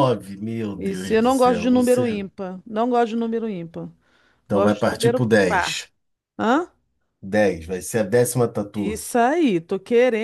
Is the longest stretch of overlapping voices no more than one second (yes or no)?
no